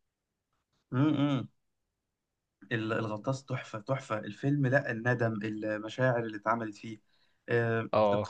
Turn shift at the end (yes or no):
no